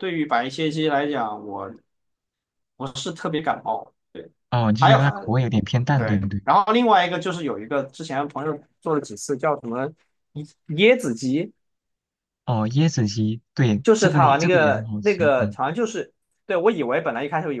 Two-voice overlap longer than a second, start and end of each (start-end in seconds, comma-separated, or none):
13.8-15.6